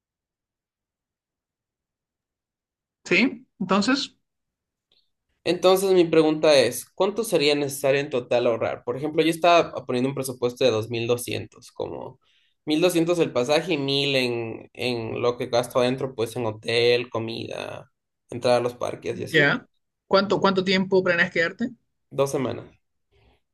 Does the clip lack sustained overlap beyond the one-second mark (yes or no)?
yes